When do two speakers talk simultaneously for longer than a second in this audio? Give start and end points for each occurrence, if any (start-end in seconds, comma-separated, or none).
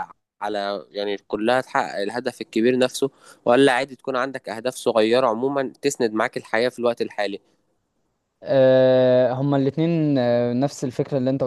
none